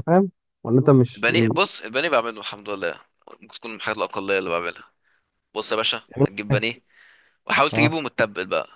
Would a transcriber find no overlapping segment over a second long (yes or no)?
yes